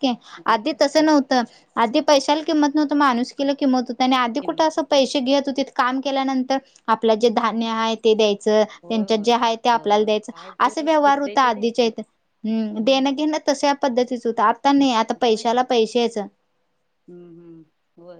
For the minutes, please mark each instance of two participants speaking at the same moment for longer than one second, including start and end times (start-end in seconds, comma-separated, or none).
8.8-11.9